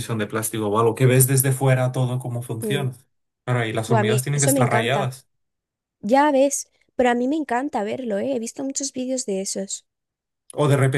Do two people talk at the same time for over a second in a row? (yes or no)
yes